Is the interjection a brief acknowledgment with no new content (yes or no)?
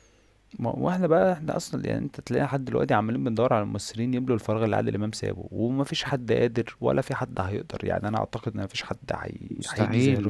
no